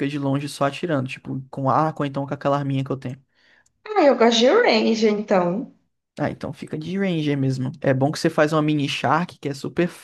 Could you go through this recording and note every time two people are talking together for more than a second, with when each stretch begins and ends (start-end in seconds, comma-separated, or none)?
none